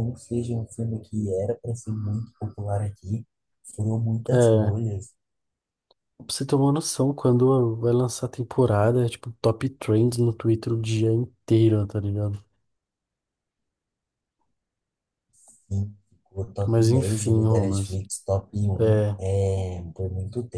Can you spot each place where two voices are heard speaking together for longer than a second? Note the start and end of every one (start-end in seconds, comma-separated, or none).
16.6-18.0